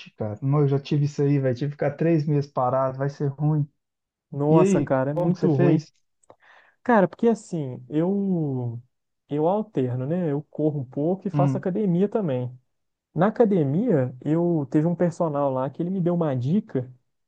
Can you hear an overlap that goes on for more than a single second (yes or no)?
yes